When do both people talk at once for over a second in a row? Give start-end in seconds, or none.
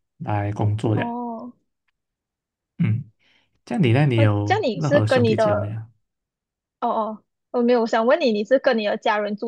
4.2-5.8